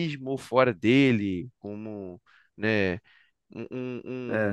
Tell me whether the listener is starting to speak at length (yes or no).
yes